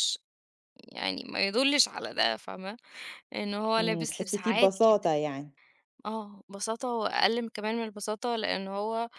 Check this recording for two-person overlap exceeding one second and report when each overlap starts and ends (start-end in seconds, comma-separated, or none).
3.8-5.1